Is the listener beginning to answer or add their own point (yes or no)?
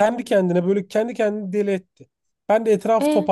no